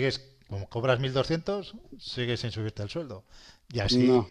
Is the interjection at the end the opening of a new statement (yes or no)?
no